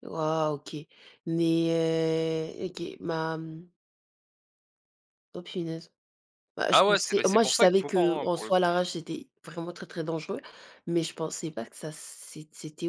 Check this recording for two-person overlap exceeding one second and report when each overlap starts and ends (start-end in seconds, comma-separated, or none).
6.7-8.7